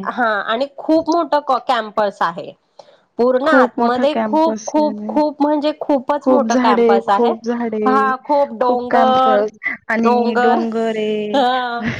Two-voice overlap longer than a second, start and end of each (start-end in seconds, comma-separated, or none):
3.4-5.2